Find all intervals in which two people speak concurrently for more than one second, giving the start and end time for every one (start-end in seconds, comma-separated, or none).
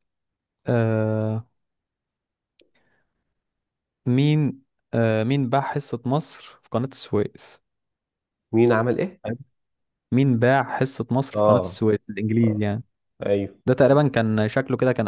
none